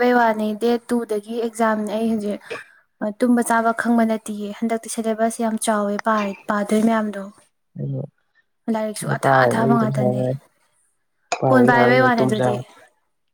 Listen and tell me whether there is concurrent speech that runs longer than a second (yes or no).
yes